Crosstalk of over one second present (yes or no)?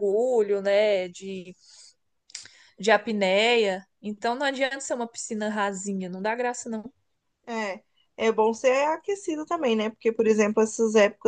no